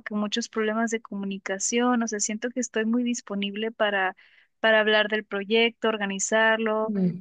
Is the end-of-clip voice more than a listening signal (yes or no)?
no